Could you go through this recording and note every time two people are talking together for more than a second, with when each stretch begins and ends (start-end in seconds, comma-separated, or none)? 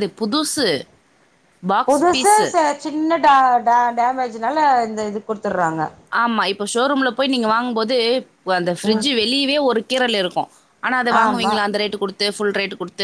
none